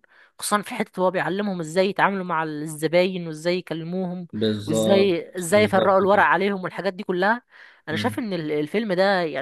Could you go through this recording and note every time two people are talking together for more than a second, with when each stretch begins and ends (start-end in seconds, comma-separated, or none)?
4.7-6.3